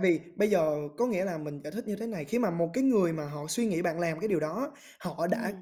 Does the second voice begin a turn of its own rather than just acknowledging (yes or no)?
no